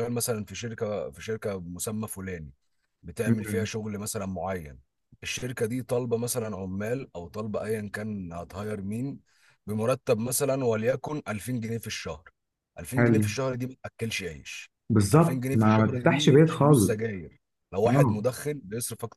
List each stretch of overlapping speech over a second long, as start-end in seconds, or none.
15.1-17.0